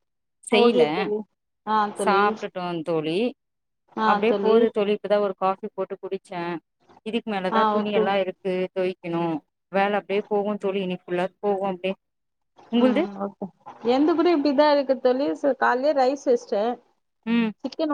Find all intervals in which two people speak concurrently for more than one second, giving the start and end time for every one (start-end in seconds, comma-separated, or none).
none